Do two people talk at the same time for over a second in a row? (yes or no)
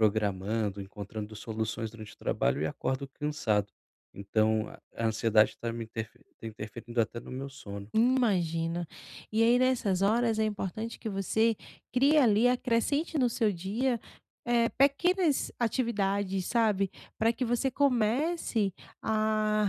no